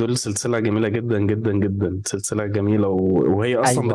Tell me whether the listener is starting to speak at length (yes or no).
no